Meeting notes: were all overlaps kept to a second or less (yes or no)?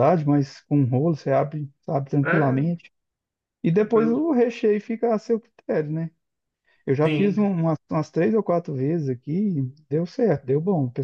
yes